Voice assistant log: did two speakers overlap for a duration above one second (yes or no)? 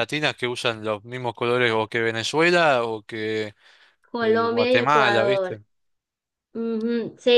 yes